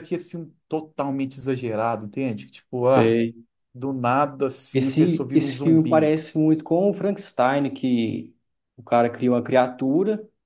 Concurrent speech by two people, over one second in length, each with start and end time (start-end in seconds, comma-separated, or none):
4.7-6.2